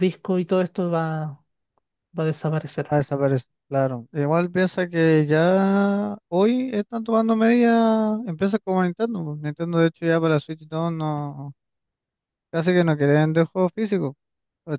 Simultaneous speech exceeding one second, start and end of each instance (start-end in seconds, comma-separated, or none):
none